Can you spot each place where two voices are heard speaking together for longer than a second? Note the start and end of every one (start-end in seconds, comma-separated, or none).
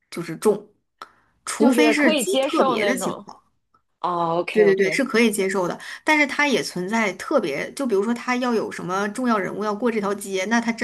1.6-3.2